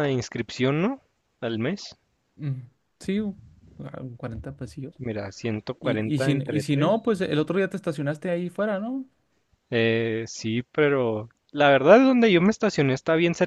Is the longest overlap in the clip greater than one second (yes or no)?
yes